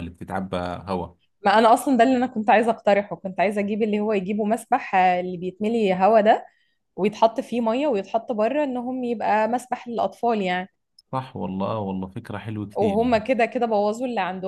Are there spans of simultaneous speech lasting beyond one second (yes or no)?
no